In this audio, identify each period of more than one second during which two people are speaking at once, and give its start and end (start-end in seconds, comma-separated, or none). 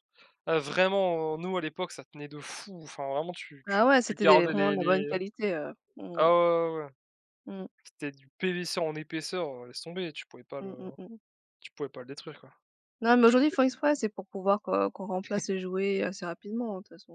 3.7-5.0